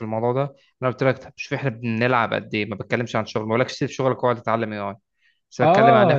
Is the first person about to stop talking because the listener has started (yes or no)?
yes